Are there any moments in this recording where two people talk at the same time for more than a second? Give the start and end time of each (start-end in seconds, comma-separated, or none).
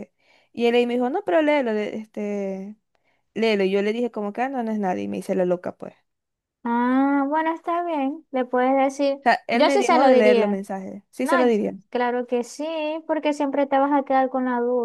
9.2-10.6